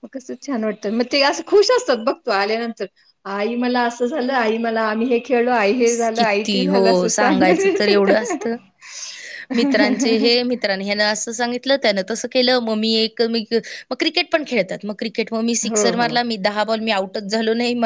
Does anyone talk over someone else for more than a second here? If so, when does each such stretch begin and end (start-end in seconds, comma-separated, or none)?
6.2-8.1